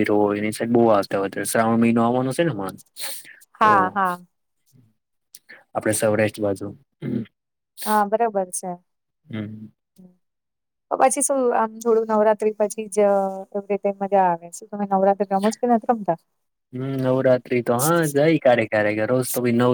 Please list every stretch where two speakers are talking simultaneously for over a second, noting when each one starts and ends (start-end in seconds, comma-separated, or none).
none